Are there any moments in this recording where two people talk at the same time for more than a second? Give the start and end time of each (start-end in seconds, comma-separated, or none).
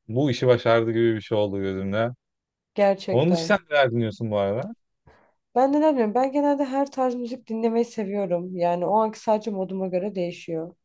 none